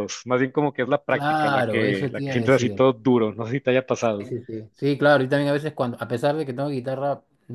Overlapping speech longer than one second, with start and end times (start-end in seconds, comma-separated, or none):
1.1-2.9